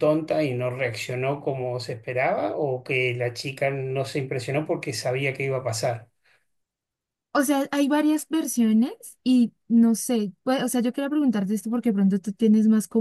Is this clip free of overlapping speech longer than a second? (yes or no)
yes